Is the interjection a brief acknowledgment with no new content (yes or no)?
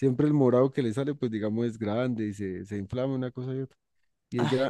yes